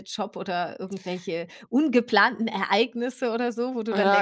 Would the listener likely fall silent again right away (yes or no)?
no